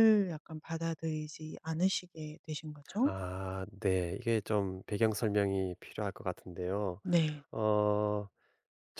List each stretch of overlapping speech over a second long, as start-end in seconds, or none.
none